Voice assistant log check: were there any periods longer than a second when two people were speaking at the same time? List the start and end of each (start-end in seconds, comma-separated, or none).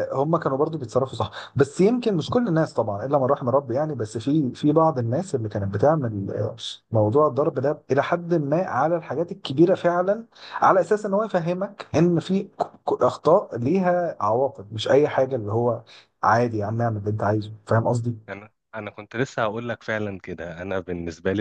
none